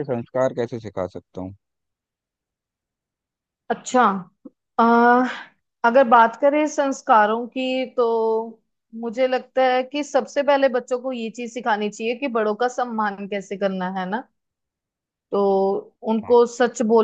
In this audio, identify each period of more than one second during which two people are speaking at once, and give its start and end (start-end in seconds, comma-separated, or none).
none